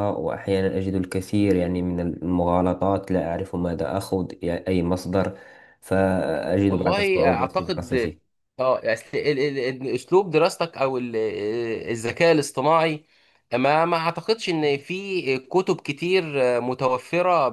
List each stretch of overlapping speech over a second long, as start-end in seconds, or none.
6.7-7.9